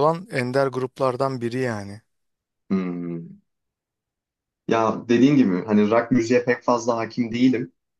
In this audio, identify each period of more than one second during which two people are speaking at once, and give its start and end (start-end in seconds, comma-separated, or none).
none